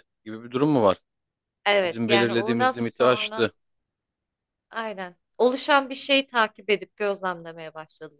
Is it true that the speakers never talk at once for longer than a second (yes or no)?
no